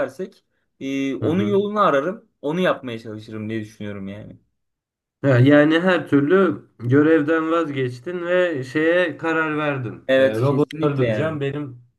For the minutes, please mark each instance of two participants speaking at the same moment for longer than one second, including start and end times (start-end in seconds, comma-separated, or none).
10.1-11.4